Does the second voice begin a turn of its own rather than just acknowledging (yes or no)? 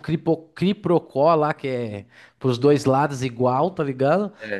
no